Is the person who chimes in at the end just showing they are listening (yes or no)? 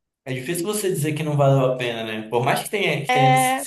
yes